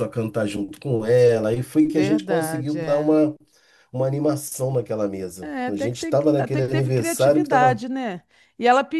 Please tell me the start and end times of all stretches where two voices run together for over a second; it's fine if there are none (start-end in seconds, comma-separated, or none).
1.9-3.2, 5.4-7.8